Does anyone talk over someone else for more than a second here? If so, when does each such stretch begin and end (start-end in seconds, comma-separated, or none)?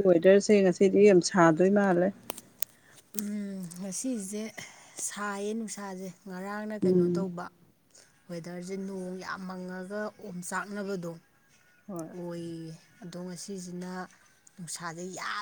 none